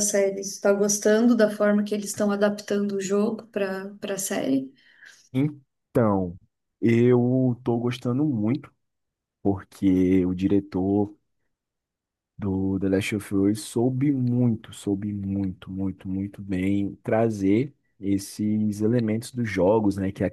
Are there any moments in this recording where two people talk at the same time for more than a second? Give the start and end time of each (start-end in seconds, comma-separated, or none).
none